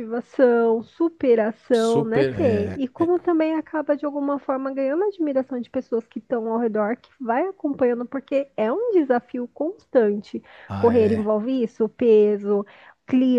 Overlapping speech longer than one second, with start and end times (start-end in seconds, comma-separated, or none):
1.7-3.1